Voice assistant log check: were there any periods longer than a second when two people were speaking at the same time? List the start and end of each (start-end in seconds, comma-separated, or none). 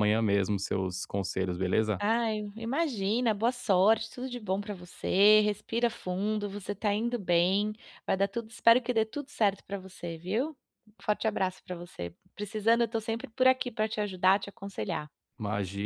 none